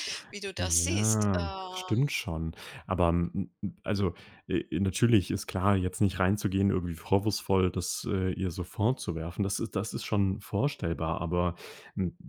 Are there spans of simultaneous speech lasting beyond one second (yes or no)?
yes